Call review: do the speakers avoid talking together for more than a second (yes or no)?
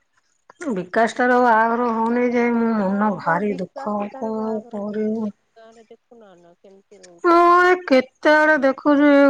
no